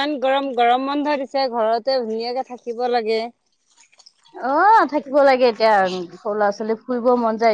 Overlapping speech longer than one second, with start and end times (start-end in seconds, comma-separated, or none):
none